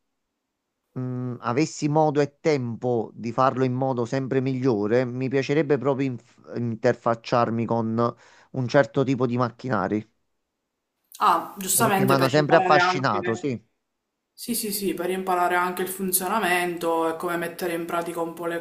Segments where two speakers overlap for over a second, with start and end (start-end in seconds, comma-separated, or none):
11.7-13.5